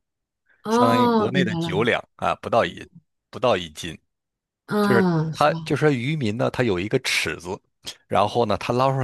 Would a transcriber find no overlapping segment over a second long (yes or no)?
no